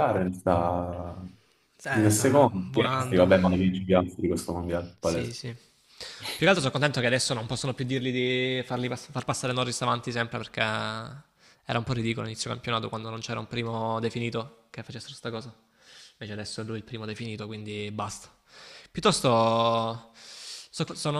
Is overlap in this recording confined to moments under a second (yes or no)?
no